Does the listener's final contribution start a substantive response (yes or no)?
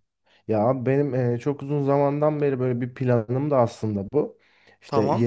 no